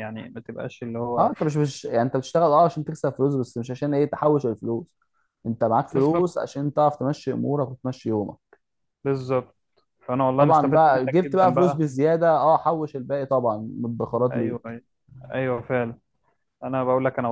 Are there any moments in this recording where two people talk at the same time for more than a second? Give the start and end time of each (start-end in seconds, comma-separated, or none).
10.3-11.8